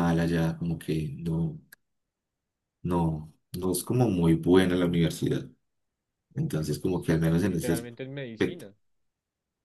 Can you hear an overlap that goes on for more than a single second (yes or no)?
yes